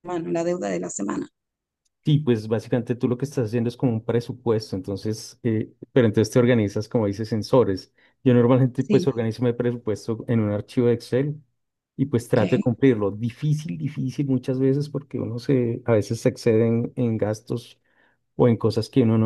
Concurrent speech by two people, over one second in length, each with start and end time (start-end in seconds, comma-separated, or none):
none